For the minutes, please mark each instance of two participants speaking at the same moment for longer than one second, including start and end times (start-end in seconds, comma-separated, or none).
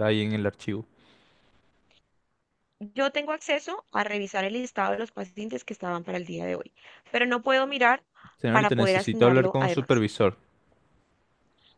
8.5-10.0